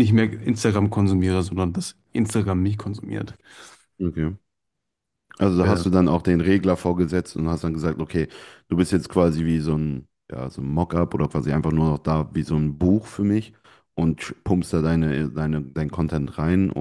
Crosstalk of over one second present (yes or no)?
no